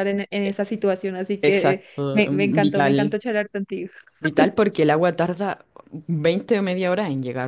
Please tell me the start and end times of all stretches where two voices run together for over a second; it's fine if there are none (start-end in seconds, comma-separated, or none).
1.4-3.1